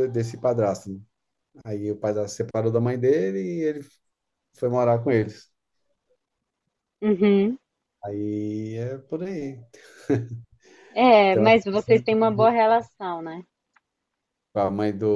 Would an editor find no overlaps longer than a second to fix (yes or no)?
no